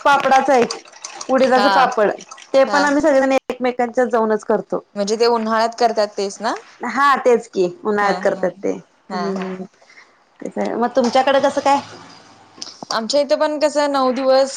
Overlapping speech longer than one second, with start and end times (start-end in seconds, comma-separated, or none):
none